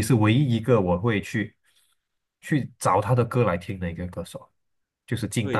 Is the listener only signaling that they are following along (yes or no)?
no